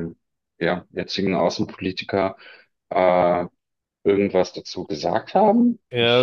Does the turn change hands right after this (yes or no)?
yes